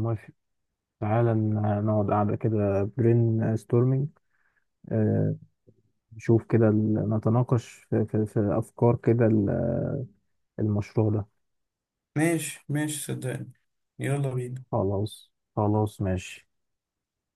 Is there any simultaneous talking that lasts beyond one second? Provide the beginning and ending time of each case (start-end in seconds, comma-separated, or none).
none